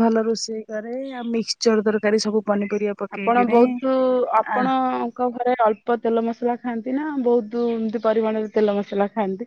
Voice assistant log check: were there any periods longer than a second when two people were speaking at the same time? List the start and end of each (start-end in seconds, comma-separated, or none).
none